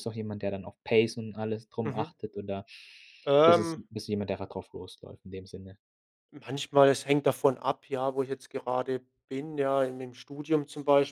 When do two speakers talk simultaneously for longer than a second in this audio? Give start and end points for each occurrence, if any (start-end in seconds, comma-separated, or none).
none